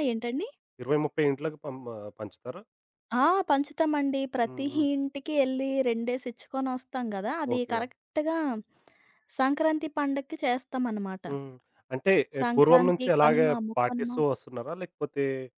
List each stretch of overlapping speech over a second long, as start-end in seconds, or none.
12.4-14.1